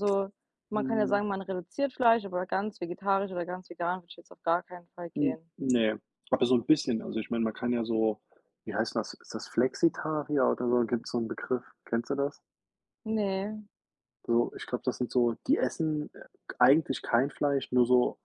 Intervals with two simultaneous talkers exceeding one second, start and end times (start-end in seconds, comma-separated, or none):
none